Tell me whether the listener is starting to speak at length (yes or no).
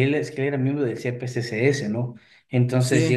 no